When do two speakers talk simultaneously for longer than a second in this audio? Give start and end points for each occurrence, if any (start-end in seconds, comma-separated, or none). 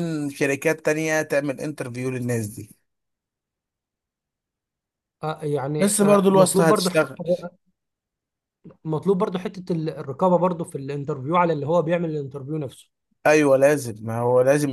5.8-7.2